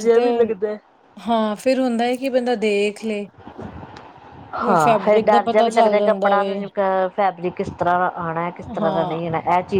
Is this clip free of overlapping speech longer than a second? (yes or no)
no